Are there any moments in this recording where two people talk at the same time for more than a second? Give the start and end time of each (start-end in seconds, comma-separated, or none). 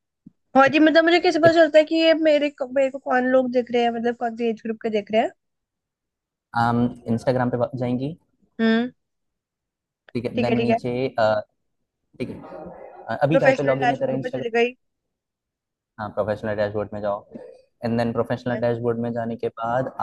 13.3-14.6